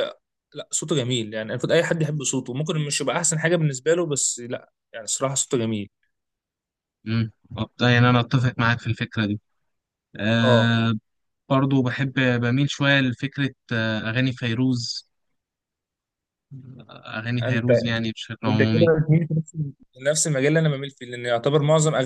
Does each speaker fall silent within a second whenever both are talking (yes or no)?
yes